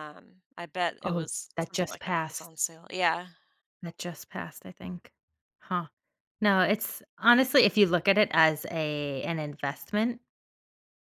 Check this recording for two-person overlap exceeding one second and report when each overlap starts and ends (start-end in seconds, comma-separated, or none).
1.0-2.5